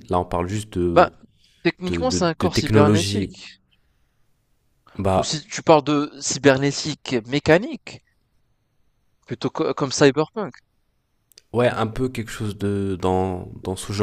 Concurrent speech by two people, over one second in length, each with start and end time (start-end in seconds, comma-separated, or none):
1.9-3.4